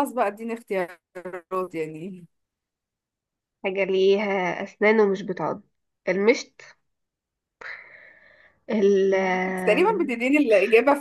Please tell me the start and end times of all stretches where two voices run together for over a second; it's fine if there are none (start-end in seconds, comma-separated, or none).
none